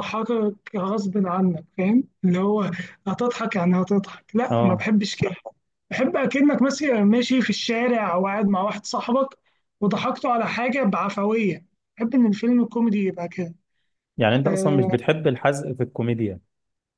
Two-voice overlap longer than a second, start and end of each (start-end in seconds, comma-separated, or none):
none